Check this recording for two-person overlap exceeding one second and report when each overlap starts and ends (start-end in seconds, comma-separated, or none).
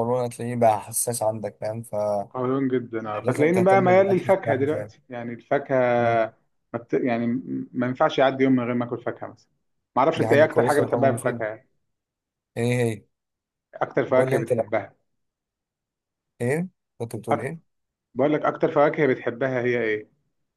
3.5-4.9, 10.2-11.4